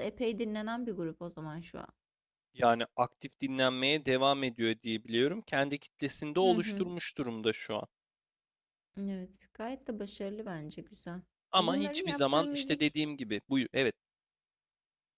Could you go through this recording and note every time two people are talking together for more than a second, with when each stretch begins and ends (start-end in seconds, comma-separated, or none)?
11.6-12.9